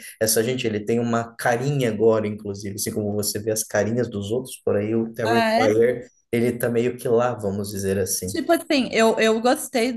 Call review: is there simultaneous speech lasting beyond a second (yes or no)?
no